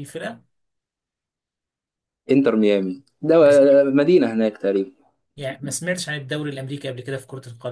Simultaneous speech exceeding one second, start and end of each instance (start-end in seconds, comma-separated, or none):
none